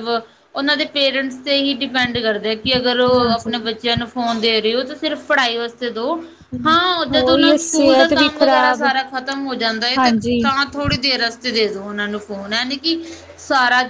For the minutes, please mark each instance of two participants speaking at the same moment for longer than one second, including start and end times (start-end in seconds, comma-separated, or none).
7.2-8.8